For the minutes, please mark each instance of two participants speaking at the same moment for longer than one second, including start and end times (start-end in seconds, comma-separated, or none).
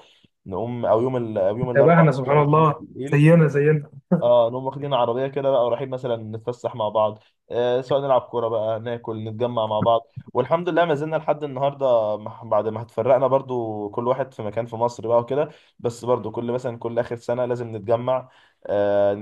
1.6-3.3